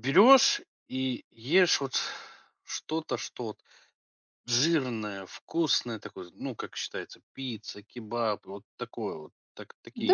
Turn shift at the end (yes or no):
yes